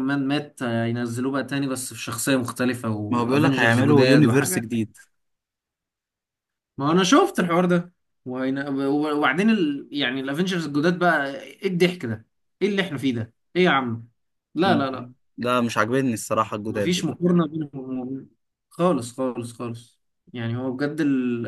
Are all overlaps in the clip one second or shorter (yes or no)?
no